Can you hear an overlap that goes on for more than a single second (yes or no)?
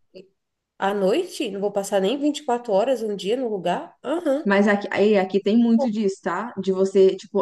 no